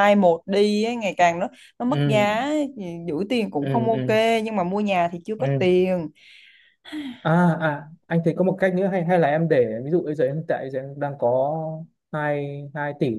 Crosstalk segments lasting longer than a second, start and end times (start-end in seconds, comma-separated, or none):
none